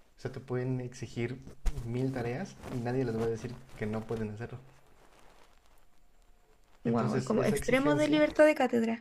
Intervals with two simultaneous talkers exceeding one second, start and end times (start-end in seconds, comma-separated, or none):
6.8-8.2